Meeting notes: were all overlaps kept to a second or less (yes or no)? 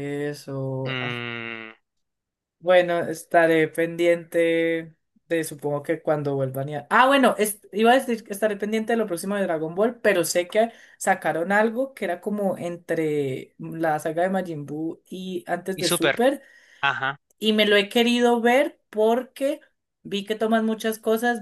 yes